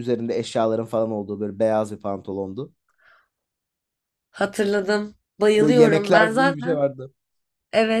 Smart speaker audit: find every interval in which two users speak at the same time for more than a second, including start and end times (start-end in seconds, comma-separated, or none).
5.6-6.9